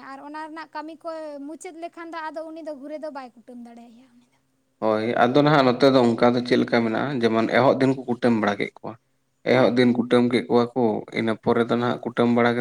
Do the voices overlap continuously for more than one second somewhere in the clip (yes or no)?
no